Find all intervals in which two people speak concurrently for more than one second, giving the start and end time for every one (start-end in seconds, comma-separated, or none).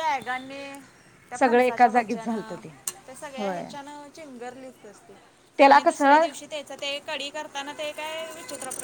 1.4-2.6